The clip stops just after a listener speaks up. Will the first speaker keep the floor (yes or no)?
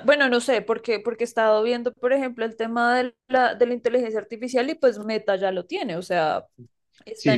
no